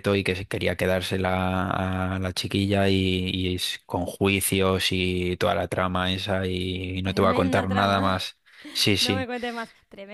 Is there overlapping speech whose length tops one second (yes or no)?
yes